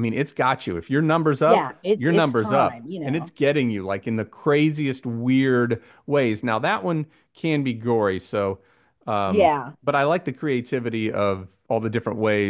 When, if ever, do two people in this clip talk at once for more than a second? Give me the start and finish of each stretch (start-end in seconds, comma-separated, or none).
1.4-3.3